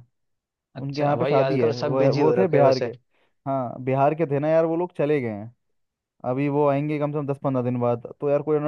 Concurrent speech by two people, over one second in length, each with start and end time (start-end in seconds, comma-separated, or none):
0.8-2.9